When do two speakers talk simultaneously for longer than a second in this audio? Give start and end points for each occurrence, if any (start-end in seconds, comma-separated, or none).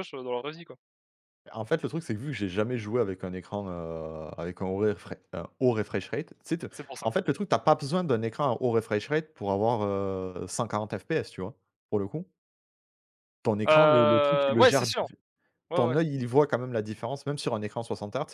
13.7-15.1